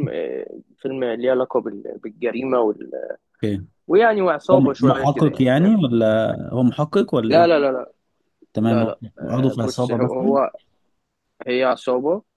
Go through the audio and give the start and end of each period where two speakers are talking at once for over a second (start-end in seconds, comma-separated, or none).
4.5-5.8, 8.6-10.4